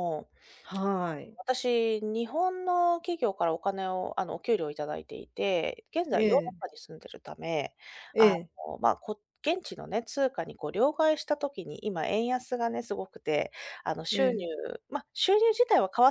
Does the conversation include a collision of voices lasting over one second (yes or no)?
no